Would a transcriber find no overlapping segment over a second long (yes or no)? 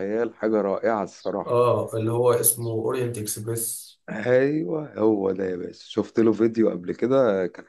yes